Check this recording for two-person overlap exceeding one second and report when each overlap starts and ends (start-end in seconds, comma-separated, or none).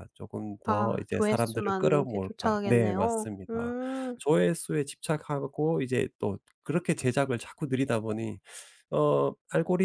0.6-3.7